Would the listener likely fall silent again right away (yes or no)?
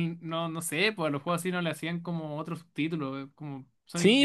no